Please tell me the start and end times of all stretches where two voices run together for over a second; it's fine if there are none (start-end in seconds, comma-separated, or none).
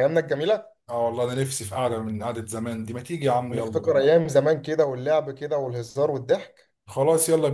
none